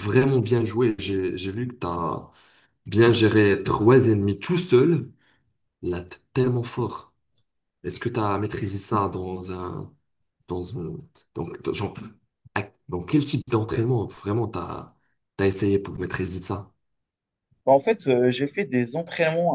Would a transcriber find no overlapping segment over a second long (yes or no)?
yes